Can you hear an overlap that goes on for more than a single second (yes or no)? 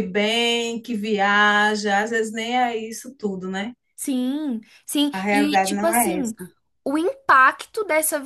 yes